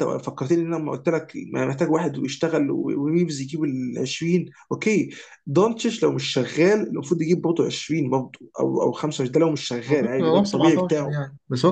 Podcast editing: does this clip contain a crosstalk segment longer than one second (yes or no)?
yes